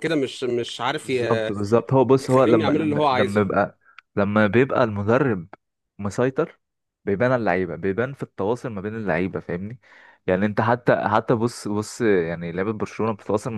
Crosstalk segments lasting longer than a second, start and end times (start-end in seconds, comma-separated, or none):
2.2-3.5